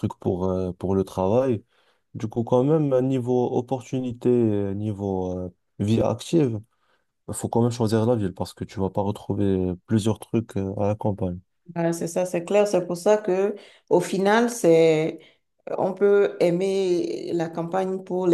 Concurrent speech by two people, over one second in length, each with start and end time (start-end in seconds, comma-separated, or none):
none